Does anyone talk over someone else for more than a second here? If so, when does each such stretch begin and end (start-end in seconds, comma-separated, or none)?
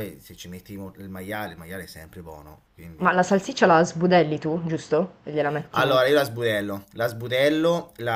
none